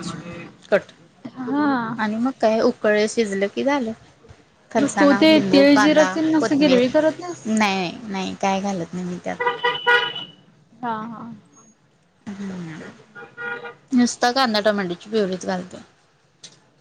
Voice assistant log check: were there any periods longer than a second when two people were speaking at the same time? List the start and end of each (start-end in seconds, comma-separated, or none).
4.8-6.8